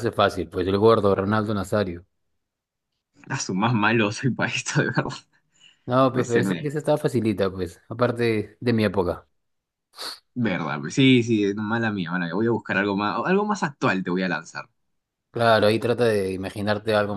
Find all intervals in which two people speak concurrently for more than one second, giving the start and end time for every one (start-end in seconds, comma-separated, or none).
none